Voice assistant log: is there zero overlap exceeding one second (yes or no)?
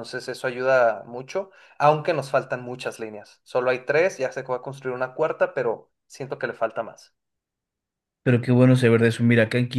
yes